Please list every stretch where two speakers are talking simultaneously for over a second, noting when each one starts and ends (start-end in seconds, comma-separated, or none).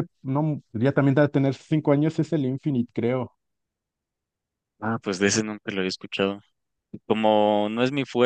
none